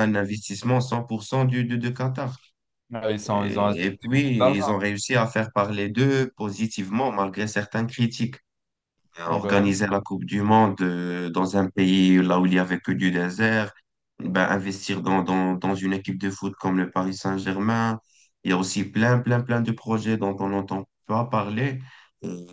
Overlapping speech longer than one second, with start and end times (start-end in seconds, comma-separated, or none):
3.2-4.6